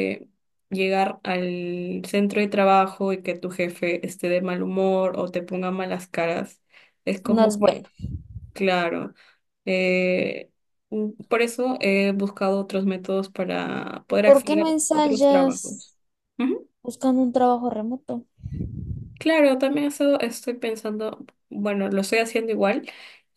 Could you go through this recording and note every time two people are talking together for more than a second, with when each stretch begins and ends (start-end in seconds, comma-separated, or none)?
14.2-15.9